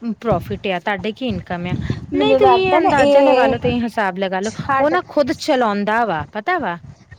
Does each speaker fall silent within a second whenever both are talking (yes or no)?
no